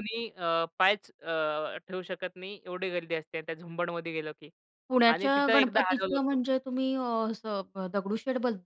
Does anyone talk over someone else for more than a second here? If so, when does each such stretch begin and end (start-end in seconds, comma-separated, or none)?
5.1-6.4